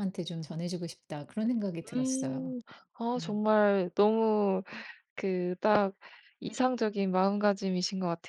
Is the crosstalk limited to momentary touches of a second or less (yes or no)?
yes